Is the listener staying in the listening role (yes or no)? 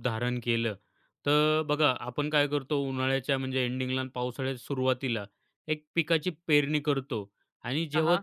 yes